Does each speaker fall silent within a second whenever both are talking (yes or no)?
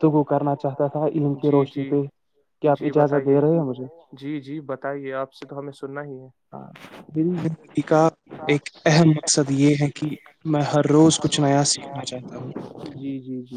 yes